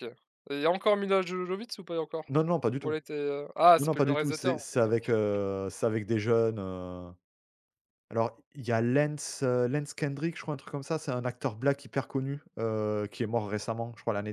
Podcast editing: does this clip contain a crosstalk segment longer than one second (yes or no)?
yes